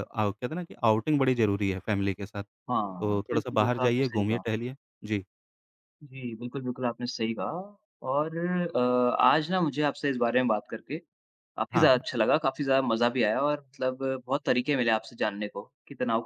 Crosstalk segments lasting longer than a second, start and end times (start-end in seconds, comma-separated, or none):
2.8-4.4